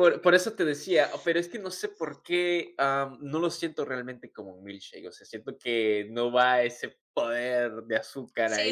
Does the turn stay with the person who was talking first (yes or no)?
no